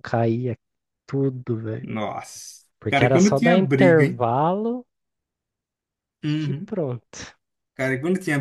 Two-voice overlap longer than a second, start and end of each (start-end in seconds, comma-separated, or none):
2.8-4.2